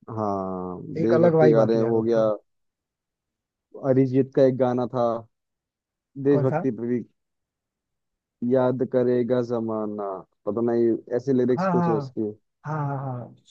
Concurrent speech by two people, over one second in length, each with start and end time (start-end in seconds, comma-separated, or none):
1.0-2.2